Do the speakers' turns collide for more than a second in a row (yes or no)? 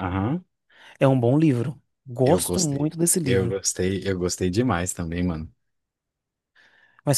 yes